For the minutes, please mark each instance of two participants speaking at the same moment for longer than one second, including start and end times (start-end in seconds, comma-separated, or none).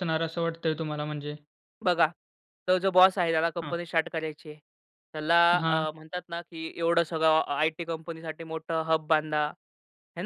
none